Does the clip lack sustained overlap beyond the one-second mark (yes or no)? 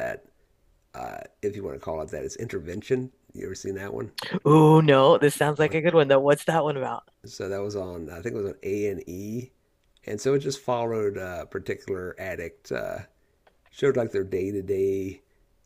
yes